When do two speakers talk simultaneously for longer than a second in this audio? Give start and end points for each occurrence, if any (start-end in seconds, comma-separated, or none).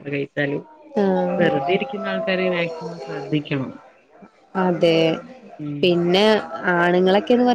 none